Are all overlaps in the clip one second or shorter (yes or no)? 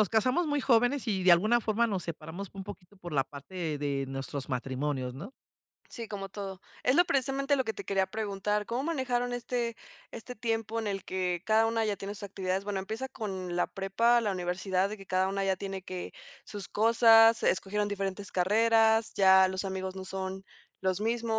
yes